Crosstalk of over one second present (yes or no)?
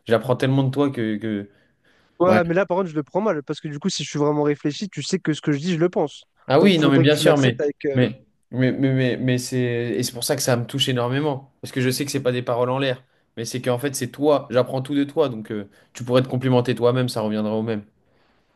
yes